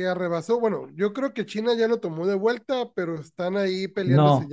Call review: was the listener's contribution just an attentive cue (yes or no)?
no